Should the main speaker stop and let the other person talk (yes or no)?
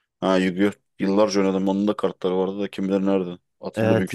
yes